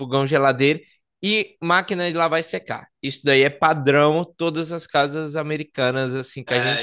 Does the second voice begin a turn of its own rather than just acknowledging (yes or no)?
yes